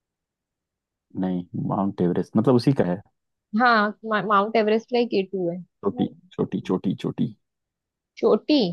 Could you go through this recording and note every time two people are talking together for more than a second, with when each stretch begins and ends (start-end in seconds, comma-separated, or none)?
none